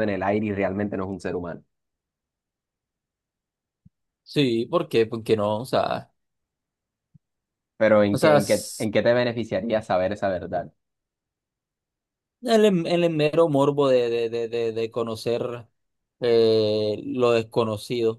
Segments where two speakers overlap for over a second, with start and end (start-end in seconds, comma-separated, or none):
none